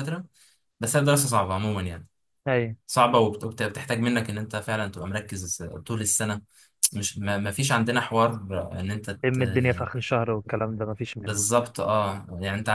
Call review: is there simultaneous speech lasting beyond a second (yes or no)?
no